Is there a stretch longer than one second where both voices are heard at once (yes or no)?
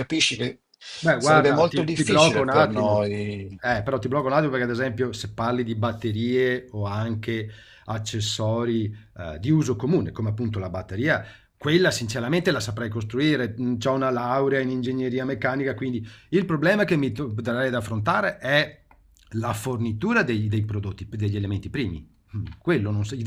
yes